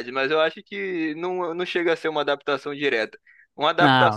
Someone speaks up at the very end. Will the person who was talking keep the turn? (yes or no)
yes